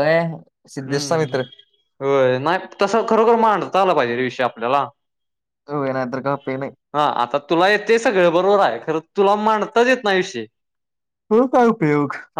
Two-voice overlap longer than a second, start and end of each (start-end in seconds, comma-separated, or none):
none